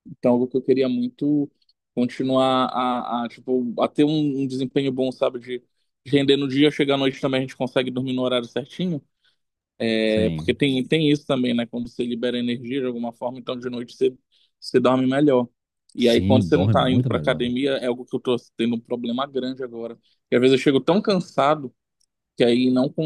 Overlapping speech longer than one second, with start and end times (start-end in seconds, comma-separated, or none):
16.0-17.5